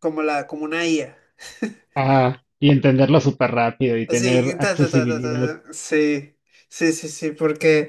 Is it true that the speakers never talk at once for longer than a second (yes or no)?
no